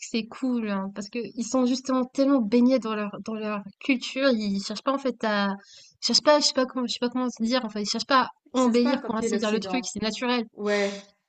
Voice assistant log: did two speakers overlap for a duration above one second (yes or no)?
yes